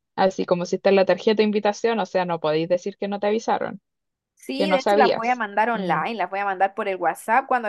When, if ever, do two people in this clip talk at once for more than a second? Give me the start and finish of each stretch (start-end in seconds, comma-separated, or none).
4.5-6.0